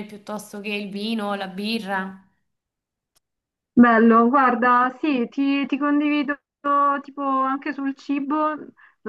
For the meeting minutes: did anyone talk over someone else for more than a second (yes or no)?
no